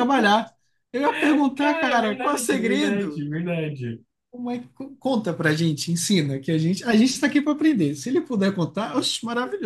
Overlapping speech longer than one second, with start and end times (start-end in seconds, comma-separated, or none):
1.6-3.2